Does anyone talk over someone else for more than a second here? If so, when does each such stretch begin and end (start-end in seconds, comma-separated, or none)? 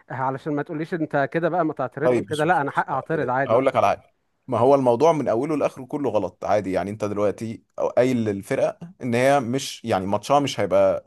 2.0-3.6